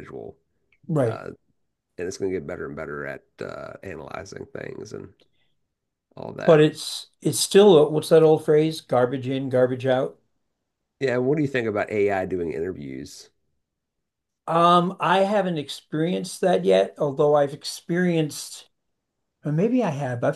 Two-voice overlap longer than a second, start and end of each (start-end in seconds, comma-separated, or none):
none